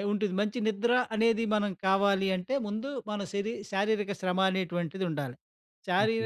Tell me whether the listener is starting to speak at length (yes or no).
yes